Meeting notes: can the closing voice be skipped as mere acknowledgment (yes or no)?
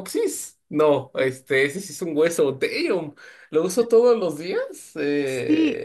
no